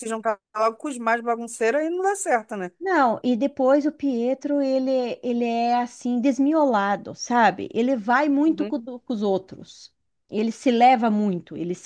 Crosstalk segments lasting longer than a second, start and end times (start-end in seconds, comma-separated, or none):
none